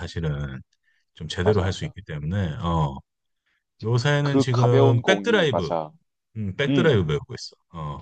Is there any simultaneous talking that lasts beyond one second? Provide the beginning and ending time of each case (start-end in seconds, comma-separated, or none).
4.2-5.7